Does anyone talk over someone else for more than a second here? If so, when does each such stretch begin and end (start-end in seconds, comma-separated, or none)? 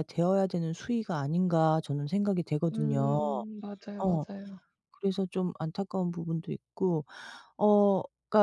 none